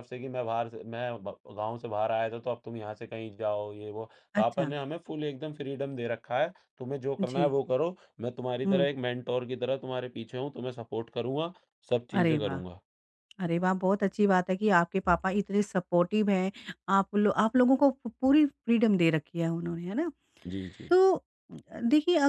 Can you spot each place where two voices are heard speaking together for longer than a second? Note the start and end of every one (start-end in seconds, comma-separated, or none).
none